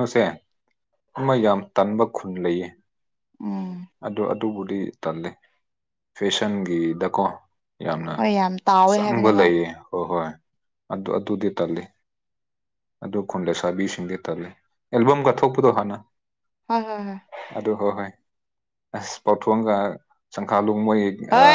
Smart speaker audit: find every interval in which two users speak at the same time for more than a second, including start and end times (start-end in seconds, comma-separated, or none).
none